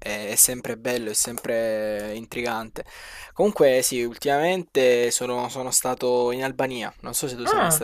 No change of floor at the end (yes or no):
no